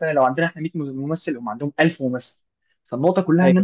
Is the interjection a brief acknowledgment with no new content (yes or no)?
yes